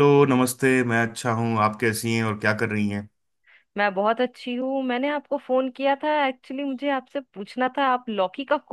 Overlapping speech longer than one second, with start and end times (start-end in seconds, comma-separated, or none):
none